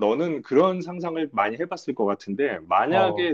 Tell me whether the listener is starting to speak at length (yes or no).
no